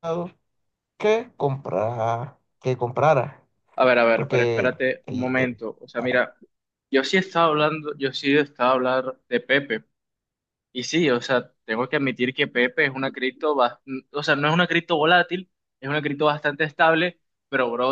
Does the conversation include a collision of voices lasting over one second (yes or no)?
yes